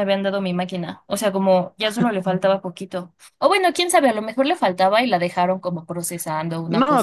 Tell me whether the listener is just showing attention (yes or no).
no